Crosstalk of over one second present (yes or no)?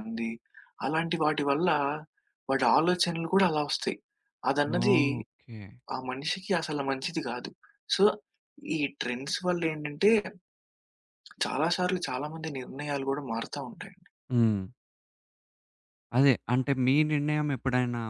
no